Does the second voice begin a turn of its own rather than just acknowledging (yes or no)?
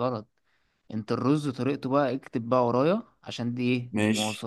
no